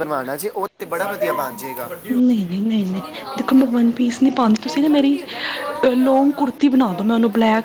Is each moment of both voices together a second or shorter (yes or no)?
yes